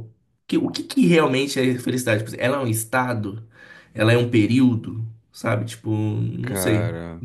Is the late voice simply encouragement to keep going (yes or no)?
no